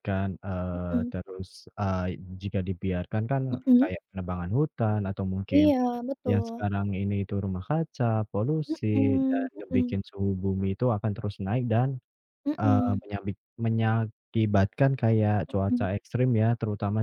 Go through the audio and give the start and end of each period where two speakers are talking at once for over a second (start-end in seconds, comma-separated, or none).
8.7-10.0